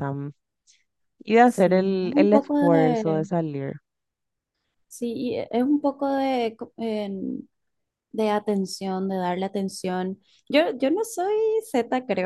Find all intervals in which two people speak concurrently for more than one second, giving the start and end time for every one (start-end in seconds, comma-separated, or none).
1.4-3.3